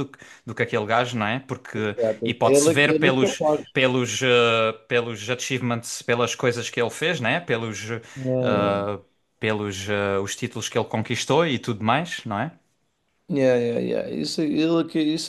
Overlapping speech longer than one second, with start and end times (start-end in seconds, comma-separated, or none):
1.8-3.2